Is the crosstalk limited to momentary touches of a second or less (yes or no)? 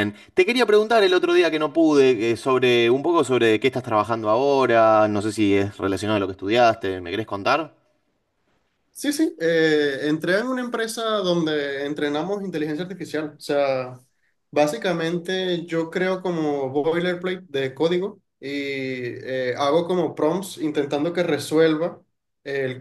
yes